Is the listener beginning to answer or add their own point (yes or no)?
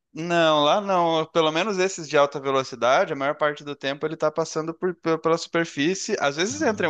no